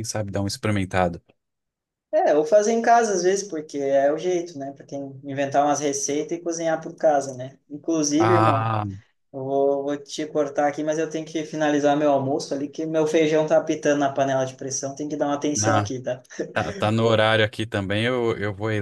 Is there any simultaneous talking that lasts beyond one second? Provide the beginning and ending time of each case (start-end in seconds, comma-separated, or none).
none